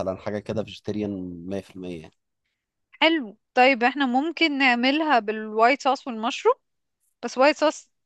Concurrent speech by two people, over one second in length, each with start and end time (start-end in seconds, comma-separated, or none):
none